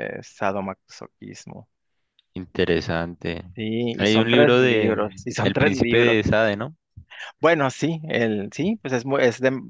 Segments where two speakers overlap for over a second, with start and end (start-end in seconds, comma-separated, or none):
4.0-6.2